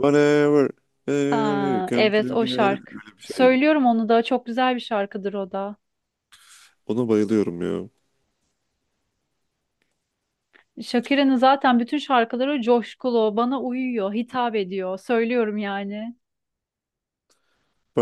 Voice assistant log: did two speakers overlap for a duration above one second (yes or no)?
yes